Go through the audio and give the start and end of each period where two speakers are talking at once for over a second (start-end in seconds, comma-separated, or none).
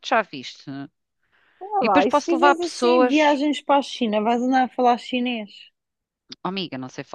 1.8-3.4